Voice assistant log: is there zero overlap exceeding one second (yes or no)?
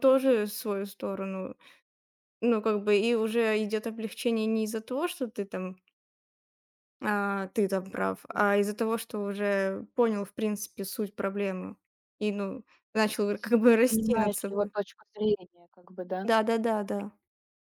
no